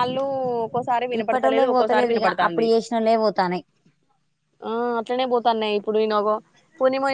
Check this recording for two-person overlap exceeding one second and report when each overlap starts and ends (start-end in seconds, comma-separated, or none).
1.2-2.6